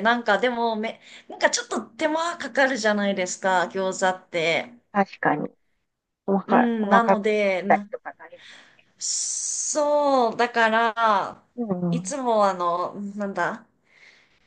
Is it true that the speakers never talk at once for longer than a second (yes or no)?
no